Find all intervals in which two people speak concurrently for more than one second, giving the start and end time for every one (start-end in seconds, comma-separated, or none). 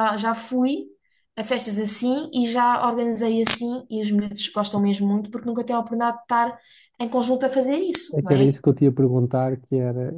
none